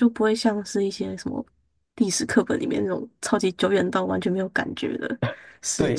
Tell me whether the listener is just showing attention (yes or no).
no